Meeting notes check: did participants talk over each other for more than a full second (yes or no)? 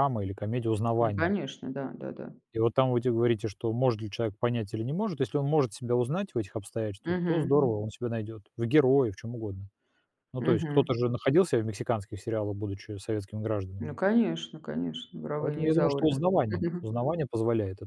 yes